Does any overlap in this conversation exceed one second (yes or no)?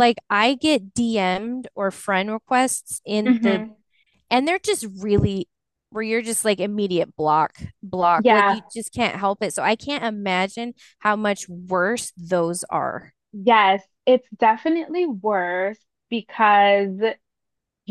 no